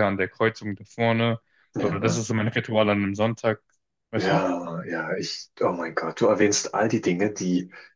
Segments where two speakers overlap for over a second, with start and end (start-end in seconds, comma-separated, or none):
none